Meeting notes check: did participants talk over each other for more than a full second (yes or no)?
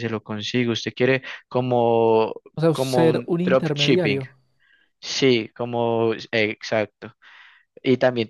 yes